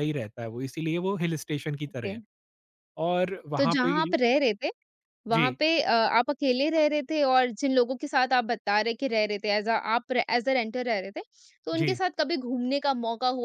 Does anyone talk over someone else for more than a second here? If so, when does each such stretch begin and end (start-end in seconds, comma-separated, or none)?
none